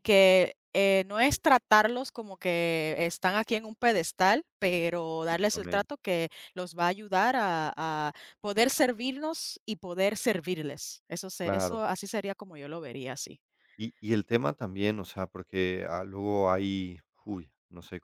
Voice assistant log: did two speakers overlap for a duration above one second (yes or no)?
no